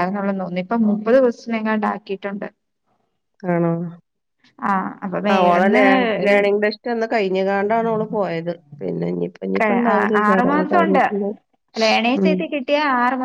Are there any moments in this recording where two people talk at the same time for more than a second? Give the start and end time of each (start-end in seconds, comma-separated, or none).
none